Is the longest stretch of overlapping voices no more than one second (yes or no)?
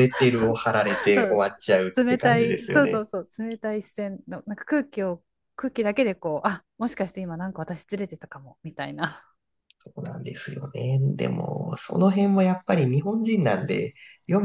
no